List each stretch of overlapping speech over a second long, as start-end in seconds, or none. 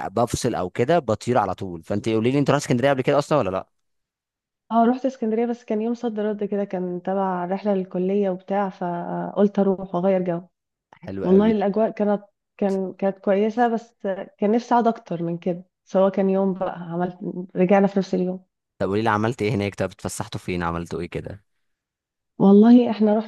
none